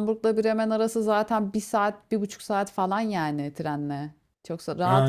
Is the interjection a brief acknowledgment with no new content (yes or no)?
no